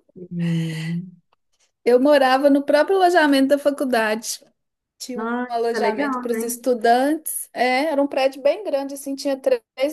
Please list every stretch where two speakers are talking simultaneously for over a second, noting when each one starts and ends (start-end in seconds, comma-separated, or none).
5.2-6.7